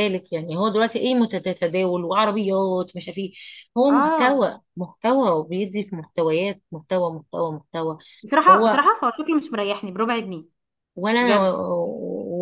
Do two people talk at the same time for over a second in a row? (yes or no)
no